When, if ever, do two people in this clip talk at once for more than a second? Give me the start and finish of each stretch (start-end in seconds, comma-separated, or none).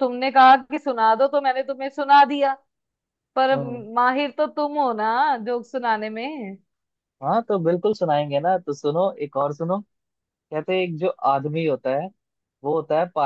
none